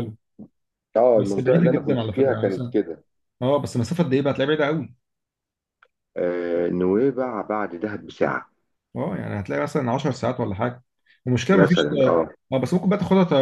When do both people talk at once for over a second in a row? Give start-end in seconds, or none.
1.1-2.8